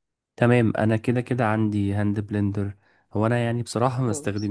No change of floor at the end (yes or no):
yes